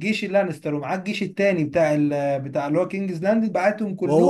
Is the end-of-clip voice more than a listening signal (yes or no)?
yes